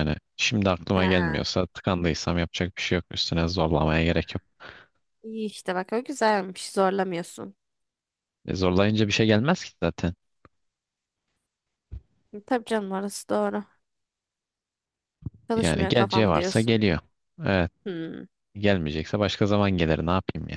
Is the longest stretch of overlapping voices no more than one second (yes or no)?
no